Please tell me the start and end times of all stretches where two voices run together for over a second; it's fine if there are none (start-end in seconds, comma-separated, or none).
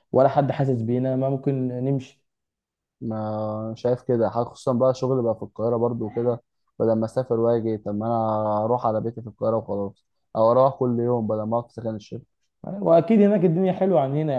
none